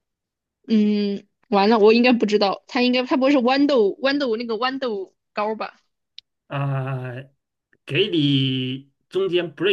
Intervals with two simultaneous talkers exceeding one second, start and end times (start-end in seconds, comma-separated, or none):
none